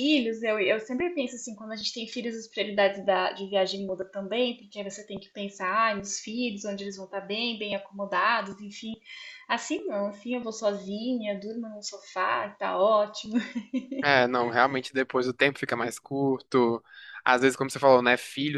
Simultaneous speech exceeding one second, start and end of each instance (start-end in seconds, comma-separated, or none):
none